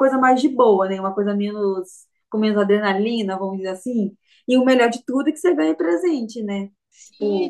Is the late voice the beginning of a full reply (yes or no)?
yes